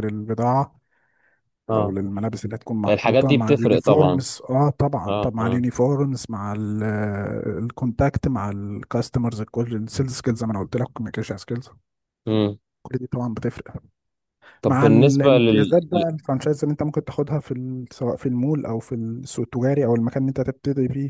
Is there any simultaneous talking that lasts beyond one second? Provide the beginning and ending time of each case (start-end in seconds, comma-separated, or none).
2.9-4.2, 14.7-16.0